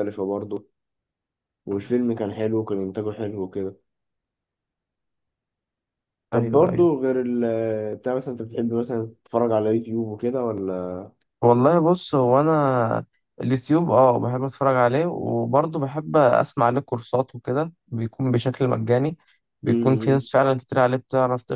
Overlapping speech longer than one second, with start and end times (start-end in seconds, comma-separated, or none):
none